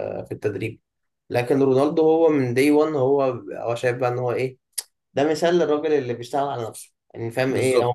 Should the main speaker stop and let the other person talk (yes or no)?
no